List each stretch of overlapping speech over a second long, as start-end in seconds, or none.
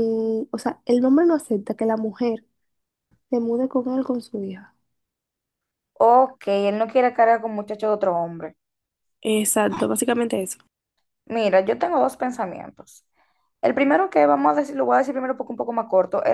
none